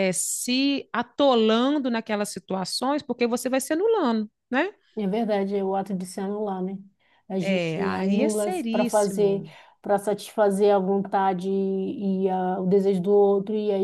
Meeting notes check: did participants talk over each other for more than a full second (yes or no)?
yes